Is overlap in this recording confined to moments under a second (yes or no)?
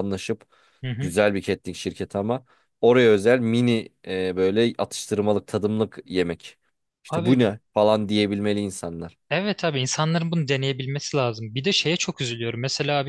yes